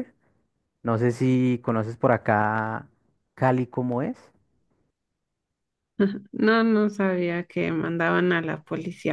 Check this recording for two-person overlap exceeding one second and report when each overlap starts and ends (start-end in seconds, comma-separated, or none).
none